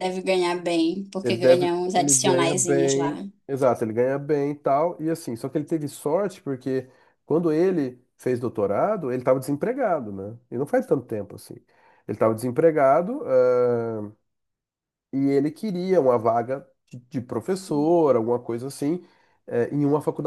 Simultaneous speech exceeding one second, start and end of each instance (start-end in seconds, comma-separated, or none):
1.2-3.1